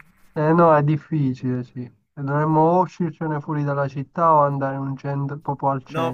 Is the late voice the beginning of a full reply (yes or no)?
yes